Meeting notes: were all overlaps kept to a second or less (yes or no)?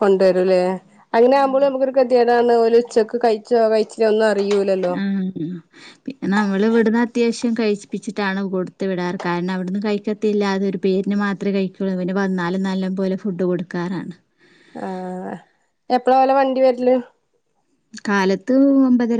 yes